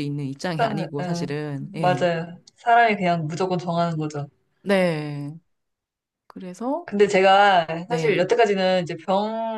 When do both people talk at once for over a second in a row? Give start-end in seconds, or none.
0.6-2.1